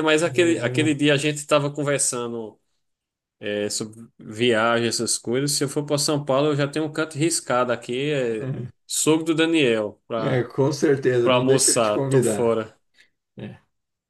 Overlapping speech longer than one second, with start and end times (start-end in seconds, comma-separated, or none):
11.2-12.6